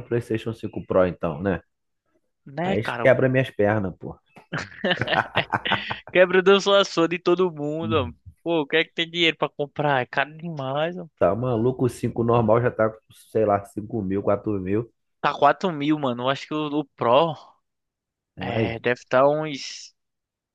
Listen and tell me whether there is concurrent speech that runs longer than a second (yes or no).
no